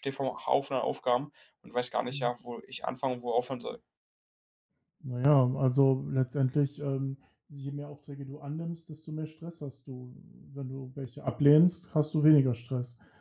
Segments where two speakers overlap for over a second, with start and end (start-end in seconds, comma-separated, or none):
none